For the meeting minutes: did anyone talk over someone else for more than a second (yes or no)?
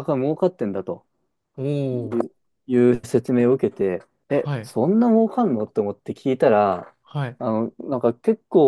no